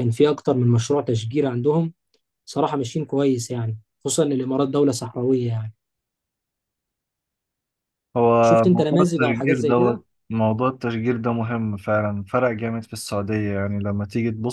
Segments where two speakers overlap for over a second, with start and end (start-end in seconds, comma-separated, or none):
8.4-10.0